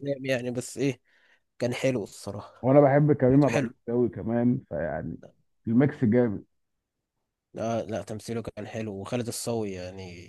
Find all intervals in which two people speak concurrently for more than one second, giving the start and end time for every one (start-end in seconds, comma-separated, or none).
none